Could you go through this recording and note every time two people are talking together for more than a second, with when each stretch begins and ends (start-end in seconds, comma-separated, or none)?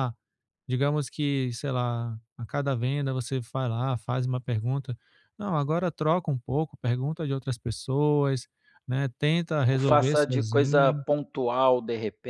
9.7-11.1